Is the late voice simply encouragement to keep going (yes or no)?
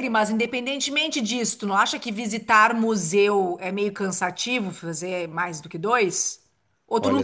no